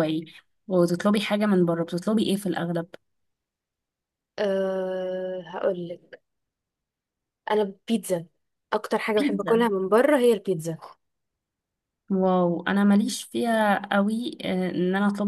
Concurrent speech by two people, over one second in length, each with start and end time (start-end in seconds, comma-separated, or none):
none